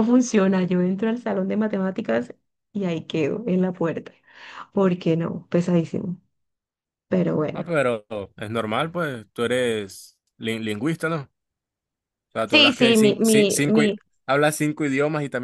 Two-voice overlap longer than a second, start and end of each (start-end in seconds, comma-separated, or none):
12.5-14.0